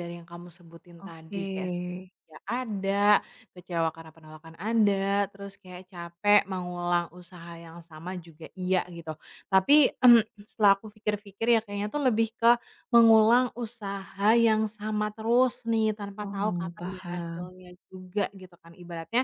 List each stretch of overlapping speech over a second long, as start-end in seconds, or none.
16.2-17.5